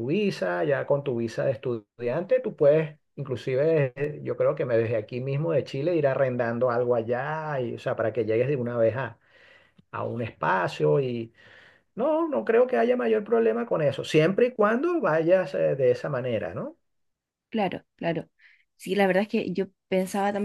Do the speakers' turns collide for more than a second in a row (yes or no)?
no